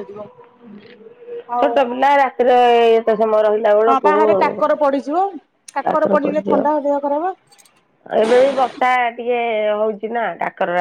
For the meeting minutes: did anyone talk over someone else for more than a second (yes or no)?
no